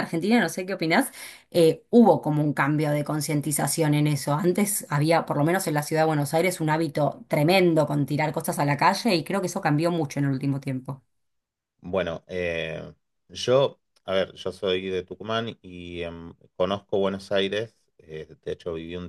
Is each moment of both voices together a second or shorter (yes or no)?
yes